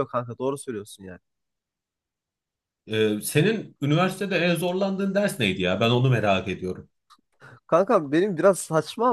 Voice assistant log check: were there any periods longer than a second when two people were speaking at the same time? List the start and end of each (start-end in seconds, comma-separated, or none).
none